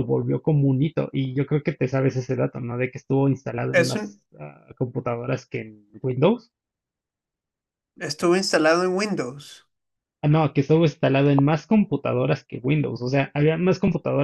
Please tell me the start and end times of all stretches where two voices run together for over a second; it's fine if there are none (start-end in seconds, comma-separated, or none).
none